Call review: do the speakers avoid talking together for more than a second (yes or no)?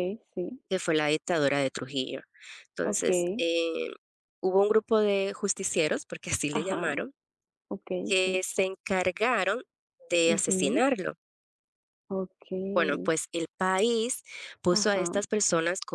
yes